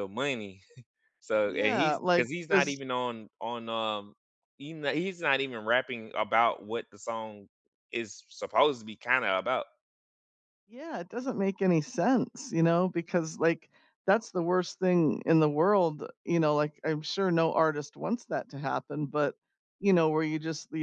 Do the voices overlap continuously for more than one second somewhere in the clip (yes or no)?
yes